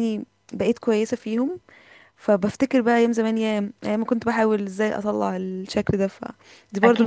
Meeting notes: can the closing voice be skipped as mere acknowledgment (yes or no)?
no